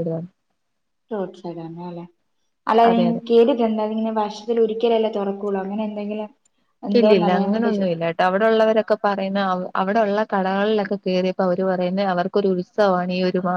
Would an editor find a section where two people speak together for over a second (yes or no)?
no